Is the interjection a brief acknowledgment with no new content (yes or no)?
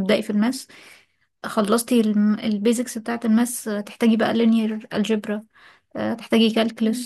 yes